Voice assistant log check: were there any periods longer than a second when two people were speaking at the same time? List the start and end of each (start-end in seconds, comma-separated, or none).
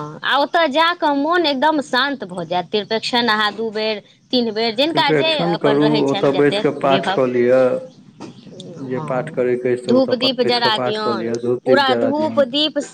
4.9-7.2, 9.9-12.4